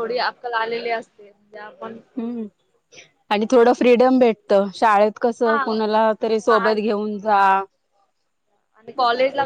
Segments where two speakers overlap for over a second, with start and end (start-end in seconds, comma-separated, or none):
5.5-6.8